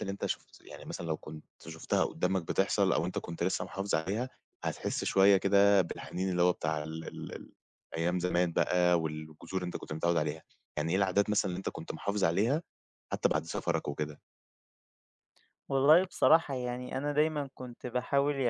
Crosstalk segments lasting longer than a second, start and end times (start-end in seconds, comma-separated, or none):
none